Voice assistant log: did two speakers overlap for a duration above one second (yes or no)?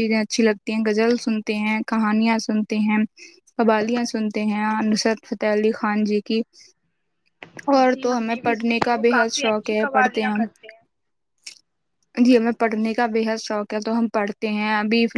yes